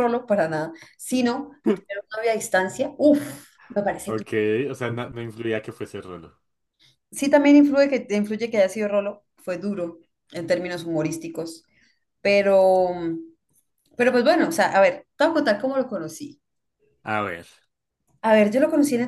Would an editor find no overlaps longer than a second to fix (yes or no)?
yes